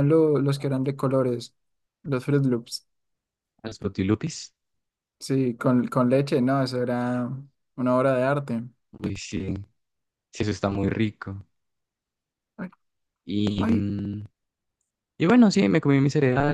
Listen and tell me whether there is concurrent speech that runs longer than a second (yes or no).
no